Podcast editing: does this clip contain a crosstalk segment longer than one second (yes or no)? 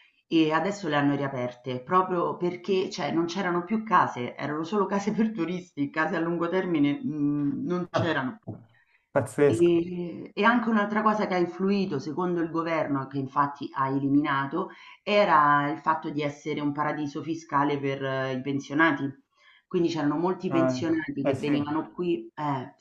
yes